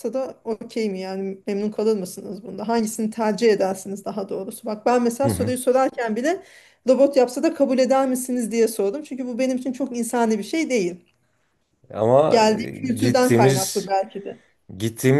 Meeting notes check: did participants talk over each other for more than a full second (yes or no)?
yes